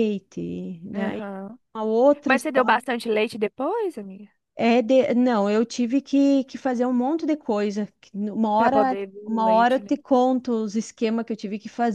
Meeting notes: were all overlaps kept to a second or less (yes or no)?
no